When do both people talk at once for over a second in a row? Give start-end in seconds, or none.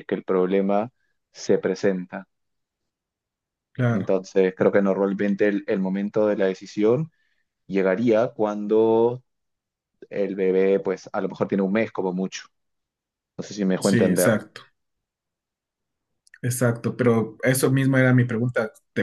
none